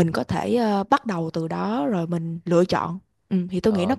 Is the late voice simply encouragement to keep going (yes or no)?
no